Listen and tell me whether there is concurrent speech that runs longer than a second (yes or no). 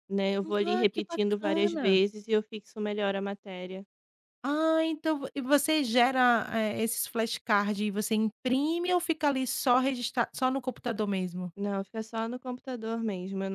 yes